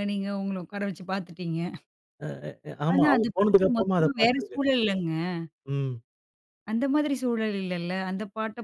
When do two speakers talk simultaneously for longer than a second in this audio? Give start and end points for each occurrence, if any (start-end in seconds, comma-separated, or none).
2.9-4.6